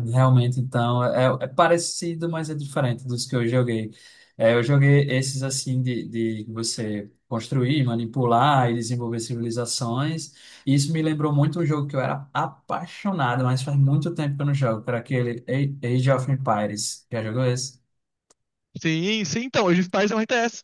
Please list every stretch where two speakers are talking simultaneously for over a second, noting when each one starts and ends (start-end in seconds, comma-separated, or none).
none